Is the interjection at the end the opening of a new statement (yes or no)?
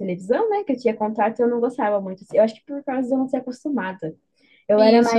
no